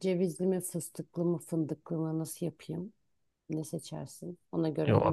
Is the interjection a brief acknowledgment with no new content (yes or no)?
no